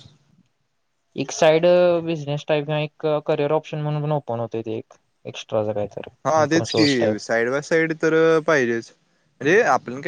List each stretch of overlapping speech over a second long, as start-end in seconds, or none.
none